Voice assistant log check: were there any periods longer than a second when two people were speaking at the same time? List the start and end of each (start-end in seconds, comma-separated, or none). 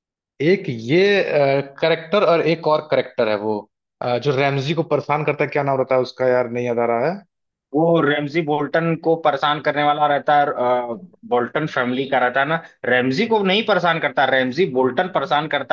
none